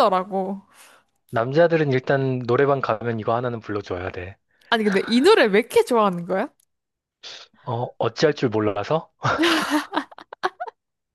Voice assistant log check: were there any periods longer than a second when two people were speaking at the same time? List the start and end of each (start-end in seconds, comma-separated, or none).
none